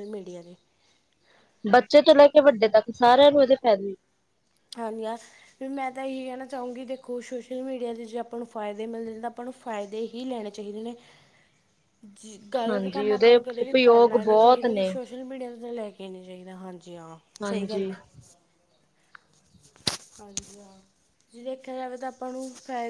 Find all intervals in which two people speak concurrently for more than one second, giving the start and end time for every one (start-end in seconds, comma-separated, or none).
12.7-14.9